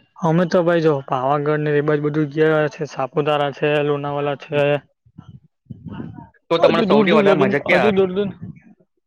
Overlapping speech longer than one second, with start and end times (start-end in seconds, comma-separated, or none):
6.6-8.1